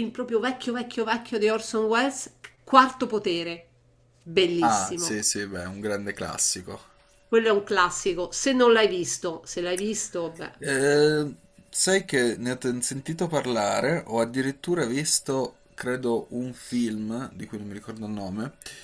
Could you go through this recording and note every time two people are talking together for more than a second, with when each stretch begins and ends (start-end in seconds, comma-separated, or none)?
none